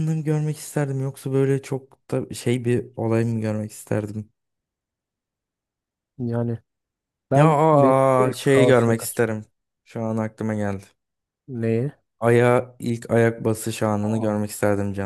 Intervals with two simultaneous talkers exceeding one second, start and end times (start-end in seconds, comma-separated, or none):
7.3-9.3